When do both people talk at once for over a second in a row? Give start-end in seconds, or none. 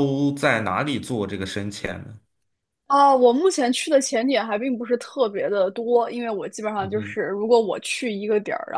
none